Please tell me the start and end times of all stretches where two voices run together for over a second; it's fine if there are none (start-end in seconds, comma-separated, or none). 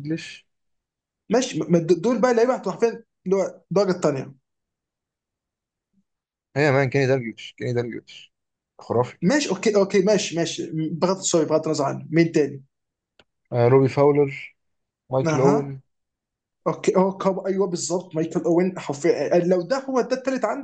none